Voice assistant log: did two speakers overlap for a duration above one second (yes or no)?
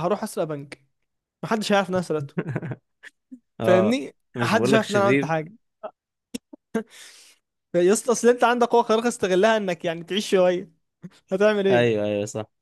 yes